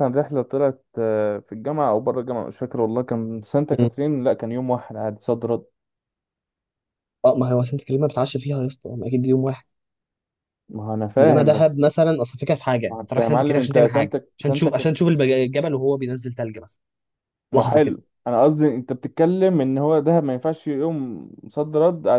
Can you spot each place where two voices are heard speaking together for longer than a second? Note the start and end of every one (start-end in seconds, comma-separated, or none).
12.9-15.0